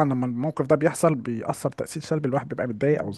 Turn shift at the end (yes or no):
yes